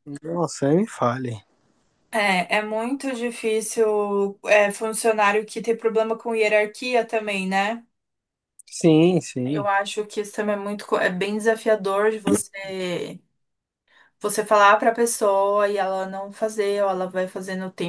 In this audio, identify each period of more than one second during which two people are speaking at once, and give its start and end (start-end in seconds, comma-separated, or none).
none